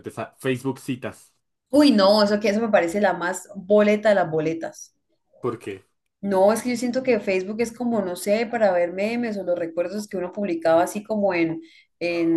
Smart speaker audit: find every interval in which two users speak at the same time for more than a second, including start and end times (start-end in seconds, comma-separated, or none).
none